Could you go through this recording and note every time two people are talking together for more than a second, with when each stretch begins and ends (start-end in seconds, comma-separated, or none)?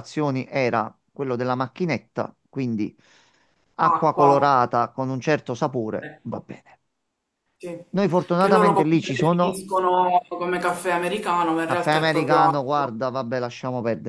8.4-9.6, 11.6-12.9